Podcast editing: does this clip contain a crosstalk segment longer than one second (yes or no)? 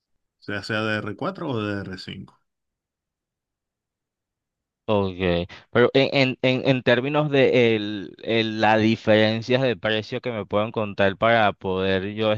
no